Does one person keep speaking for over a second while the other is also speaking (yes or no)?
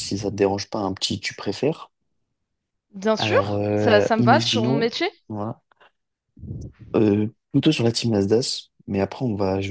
yes